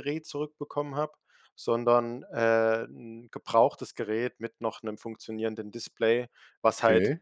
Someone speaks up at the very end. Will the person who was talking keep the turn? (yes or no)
yes